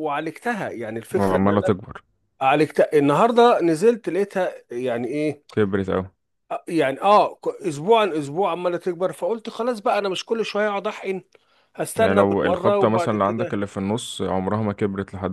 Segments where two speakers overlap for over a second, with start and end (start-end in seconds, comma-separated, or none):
12.0-13.6